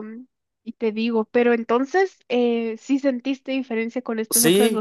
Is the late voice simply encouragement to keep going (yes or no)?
no